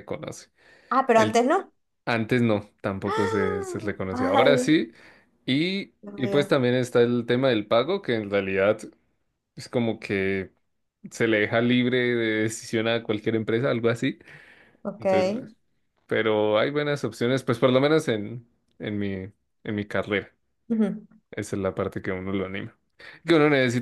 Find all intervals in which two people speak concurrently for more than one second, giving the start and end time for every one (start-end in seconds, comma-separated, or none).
3.0-4.9